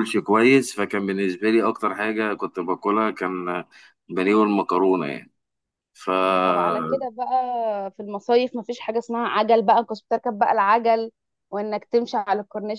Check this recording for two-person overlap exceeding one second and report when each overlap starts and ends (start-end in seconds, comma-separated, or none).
none